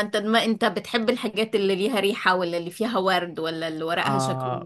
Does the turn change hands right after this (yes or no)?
yes